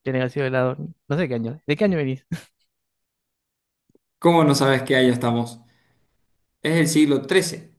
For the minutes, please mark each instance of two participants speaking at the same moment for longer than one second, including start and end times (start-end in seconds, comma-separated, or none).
none